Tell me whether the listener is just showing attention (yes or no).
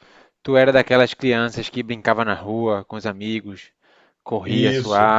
no